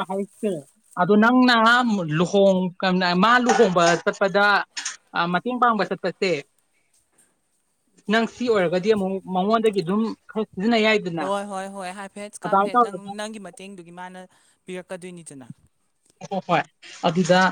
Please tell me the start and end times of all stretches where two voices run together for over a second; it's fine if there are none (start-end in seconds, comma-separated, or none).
none